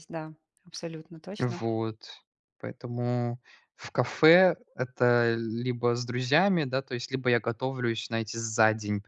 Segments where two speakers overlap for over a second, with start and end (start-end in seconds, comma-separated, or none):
none